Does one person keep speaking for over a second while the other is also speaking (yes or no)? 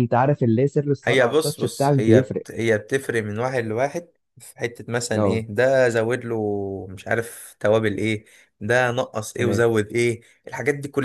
yes